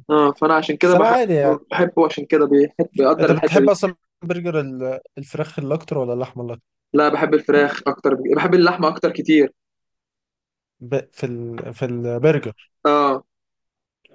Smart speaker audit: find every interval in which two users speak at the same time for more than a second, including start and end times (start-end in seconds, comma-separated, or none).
none